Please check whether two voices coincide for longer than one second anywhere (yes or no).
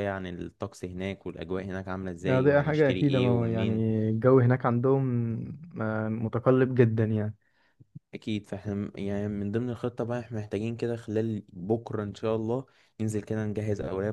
yes